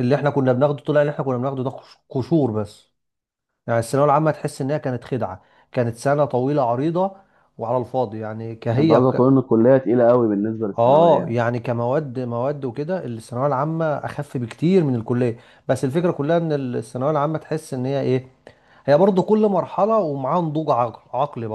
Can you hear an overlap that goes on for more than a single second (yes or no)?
no